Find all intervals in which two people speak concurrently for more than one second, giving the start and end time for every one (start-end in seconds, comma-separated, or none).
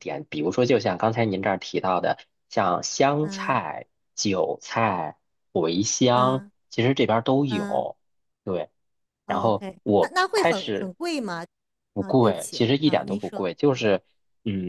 9.3-10.9, 12.0-13.9